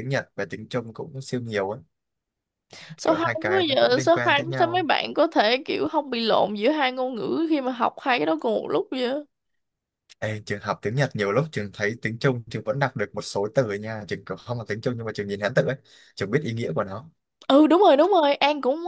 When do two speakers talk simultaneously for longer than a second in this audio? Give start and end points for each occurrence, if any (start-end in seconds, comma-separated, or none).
3.0-4.9